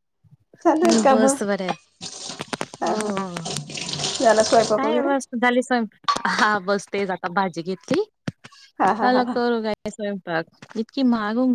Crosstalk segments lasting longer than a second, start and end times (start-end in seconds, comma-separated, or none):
none